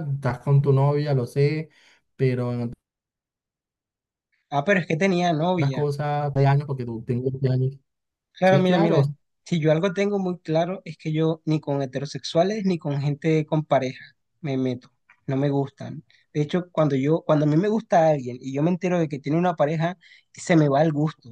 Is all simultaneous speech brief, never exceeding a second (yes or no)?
yes